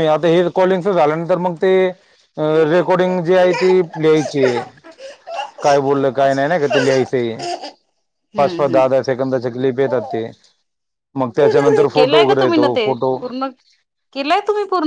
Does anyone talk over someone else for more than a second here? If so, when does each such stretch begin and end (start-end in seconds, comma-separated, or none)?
11.4-13.2